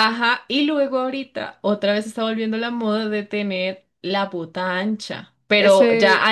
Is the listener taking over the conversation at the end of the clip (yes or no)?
no